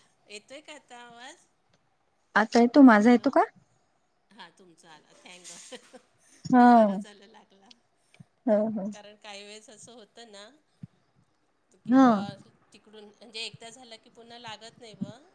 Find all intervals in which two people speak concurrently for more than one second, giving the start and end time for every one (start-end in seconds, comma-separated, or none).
none